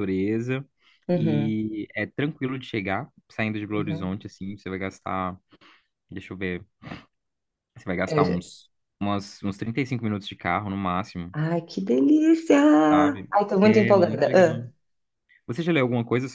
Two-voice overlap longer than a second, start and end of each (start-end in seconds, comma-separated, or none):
13.3-14.7